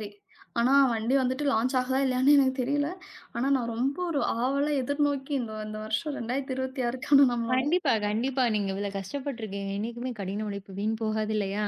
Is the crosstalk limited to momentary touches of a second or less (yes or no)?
yes